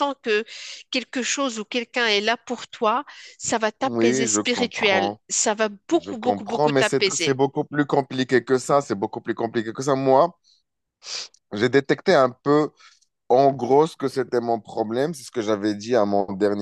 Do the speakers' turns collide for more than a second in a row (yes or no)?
yes